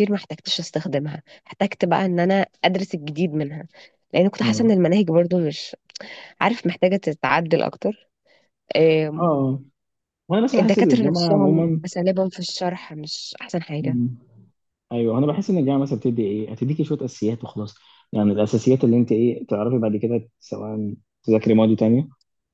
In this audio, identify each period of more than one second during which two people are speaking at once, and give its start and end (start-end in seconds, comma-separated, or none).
10.6-11.8